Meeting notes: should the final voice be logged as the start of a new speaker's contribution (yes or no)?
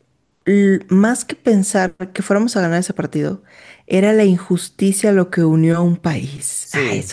yes